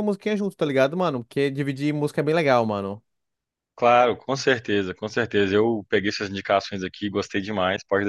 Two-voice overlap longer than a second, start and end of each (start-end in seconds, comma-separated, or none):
none